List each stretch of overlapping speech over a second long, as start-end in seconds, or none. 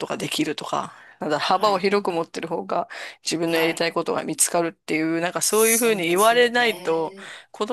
5.5-7.2